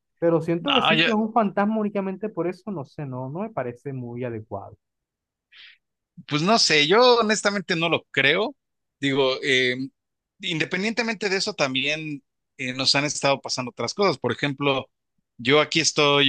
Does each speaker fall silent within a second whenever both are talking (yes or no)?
yes